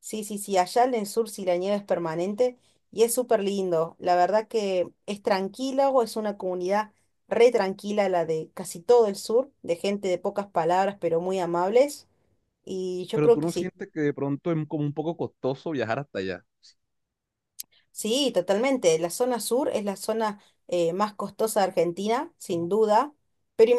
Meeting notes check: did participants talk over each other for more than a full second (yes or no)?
no